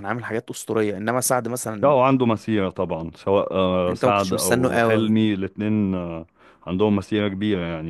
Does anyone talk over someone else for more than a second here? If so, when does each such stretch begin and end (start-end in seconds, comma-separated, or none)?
3.9-5.1